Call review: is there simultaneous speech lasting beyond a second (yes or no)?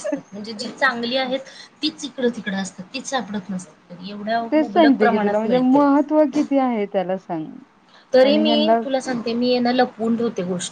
yes